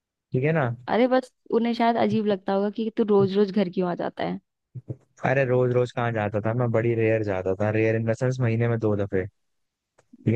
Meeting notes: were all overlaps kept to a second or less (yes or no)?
yes